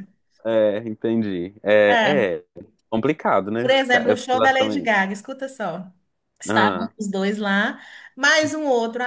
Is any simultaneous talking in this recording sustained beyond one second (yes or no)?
yes